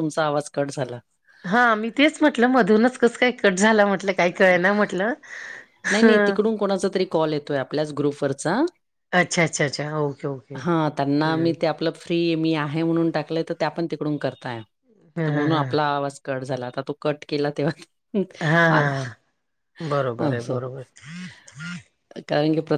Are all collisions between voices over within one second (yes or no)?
yes